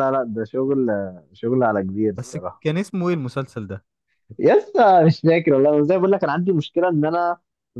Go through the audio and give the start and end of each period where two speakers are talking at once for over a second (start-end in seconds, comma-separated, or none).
none